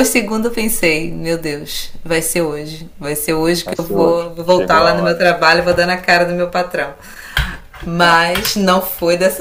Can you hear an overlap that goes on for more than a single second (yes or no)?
yes